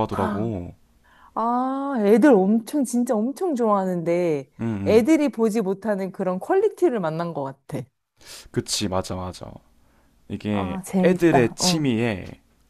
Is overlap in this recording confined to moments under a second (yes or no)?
no